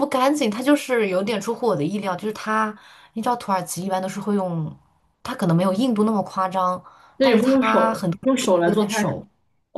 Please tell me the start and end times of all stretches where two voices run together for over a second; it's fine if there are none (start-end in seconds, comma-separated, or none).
7.2-9.2